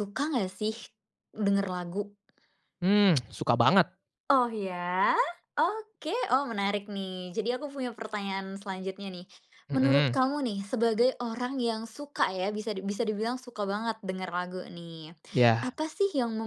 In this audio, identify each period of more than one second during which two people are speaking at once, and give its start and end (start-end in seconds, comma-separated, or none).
none